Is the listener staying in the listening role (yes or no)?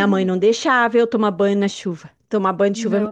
no